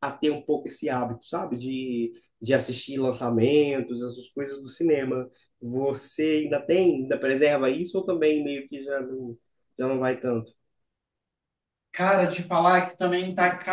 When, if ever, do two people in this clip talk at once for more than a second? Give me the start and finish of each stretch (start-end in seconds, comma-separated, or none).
none